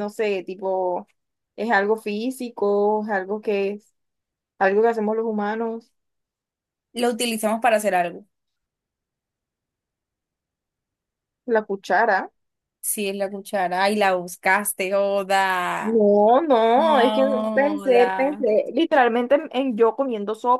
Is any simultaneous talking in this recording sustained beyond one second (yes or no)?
yes